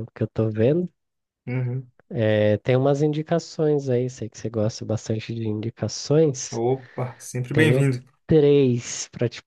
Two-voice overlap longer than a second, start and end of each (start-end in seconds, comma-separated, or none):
none